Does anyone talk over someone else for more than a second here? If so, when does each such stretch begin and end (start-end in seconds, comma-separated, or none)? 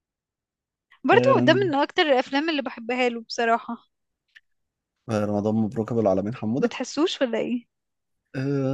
none